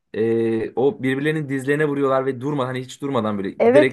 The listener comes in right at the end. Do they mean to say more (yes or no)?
yes